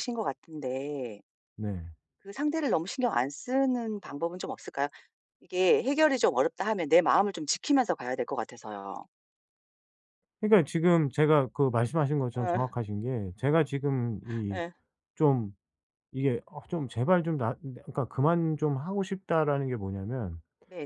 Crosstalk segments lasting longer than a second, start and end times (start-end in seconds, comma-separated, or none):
none